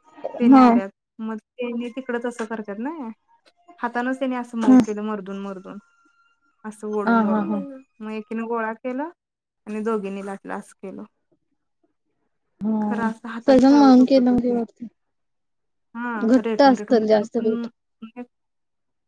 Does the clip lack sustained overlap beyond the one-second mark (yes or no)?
no